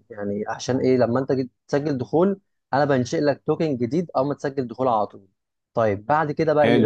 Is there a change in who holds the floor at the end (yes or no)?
yes